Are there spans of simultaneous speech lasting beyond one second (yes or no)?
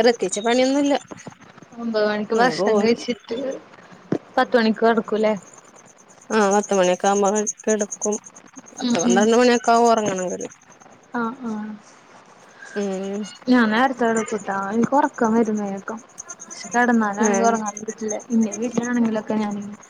no